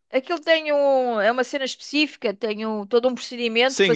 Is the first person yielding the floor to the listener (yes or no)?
yes